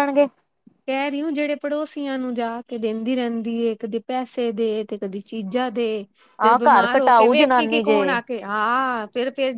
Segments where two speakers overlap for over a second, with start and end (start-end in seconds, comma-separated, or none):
6.5-8.0